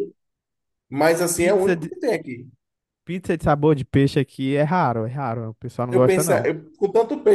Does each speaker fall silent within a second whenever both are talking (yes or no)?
yes